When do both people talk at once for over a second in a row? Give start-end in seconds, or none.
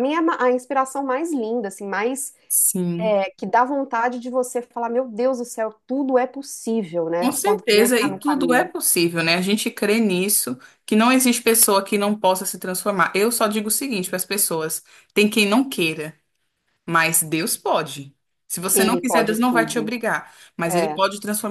7.2-8.7, 18.7-19.9